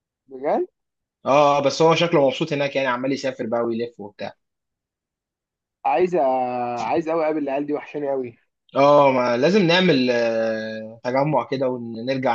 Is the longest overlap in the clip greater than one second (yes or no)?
no